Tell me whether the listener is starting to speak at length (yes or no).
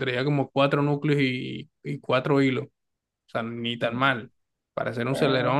no